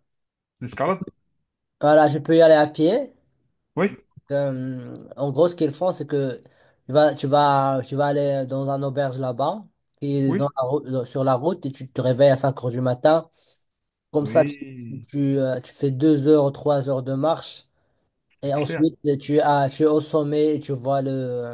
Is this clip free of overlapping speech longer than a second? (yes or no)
yes